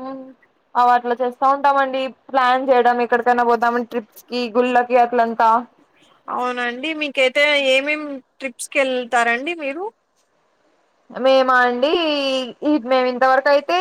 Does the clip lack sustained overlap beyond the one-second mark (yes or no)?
yes